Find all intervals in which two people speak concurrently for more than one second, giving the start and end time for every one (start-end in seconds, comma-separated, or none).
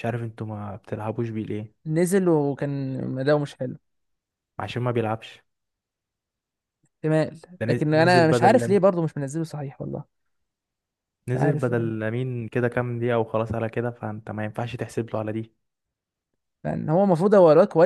7.6-8.8